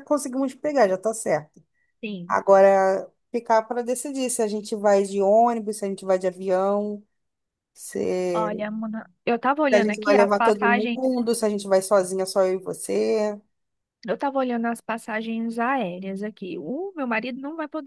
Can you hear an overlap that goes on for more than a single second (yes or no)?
yes